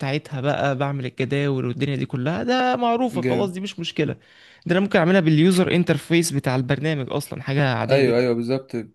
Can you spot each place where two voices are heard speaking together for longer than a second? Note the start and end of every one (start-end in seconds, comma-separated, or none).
none